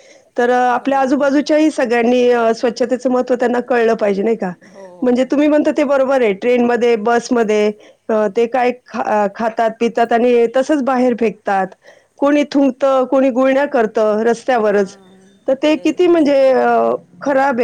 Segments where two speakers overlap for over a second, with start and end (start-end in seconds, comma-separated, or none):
none